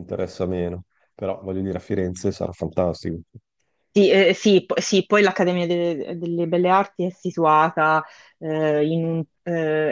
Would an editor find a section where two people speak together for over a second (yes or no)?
no